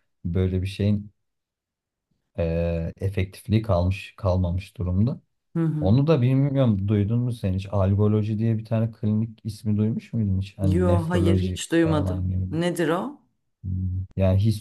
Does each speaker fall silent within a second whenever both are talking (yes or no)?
no